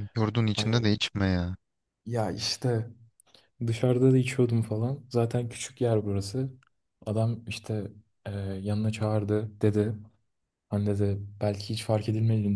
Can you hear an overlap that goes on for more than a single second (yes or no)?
no